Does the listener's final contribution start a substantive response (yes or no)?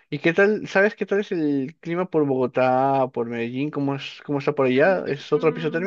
yes